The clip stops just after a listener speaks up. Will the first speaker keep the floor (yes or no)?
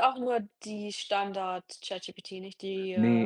no